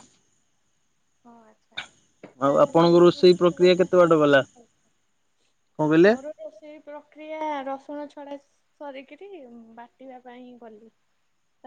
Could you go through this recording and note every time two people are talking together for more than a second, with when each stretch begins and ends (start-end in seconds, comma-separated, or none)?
2.4-4.4